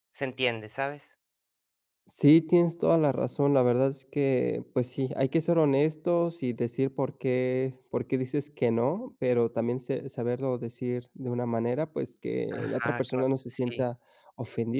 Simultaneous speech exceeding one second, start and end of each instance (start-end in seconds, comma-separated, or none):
12.5-13.8